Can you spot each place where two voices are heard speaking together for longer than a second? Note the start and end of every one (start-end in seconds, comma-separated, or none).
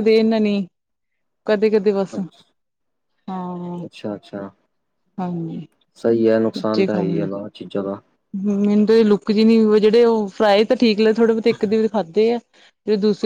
none